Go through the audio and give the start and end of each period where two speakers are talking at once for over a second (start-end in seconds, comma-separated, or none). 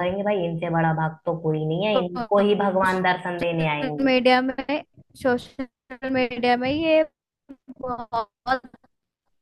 none